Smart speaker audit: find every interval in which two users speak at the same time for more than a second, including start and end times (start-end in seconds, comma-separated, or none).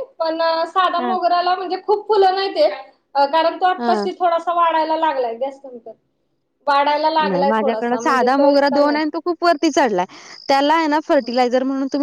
7.3-9.0